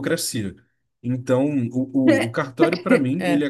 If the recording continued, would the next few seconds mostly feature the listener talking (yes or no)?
no